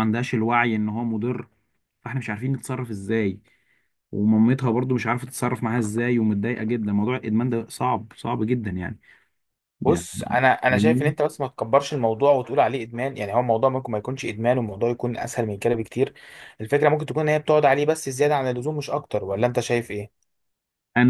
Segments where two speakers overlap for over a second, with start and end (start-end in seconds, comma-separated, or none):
none